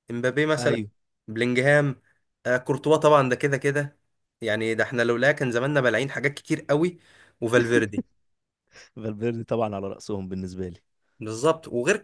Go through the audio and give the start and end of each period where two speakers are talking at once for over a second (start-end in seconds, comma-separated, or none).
none